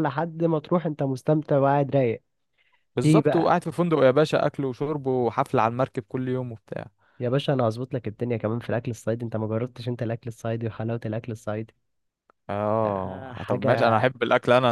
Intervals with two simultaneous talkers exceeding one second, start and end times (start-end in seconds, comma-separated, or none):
12.8-14.1